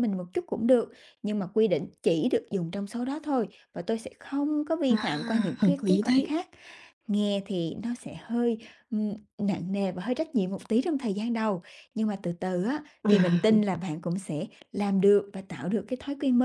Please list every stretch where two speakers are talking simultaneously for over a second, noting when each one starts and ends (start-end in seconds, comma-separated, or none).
4.9-6.3